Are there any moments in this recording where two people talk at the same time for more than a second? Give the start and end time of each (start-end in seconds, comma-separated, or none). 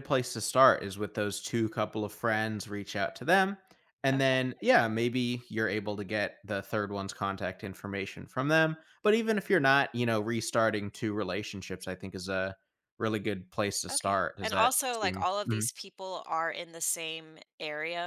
13.9-15.7